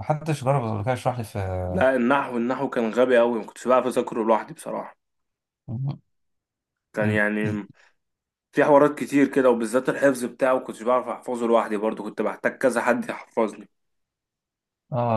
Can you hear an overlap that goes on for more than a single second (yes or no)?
no